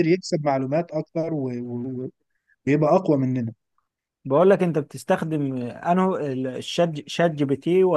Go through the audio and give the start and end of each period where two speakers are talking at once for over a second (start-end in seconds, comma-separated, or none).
none